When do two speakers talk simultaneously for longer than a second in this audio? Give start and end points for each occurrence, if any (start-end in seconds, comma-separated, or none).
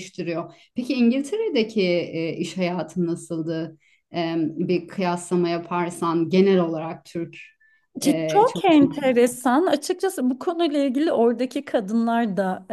8.0-9.4